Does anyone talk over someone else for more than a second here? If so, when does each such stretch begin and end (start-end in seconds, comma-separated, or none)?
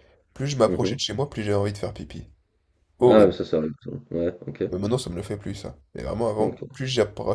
none